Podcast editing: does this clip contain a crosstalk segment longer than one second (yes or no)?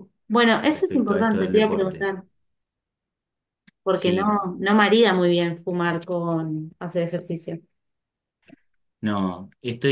yes